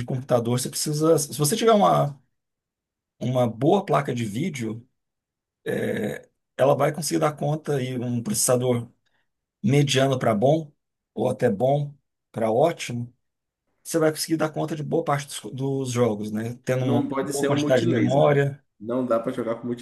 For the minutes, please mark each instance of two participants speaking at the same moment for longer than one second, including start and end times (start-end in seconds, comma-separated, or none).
16.8-18.2